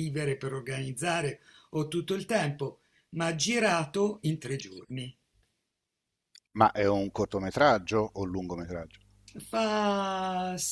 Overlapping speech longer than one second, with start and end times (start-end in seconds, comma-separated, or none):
none